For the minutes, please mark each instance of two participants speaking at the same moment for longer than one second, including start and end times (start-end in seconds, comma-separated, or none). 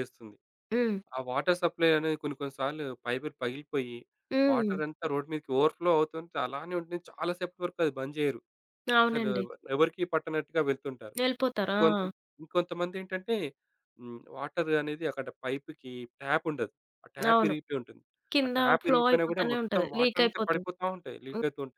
18.4-20.6